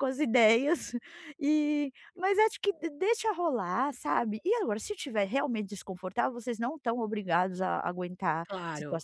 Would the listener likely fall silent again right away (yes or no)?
yes